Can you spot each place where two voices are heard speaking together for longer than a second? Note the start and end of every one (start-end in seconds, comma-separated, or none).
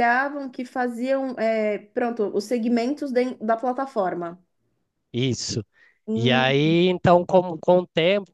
none